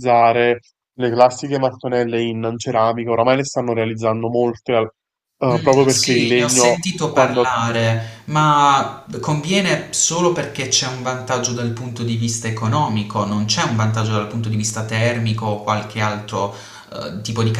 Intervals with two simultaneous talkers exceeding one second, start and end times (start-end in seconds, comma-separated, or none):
5.5-7.5